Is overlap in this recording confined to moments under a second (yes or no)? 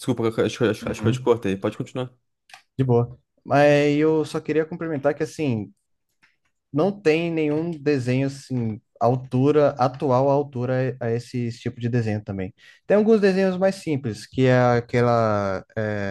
yes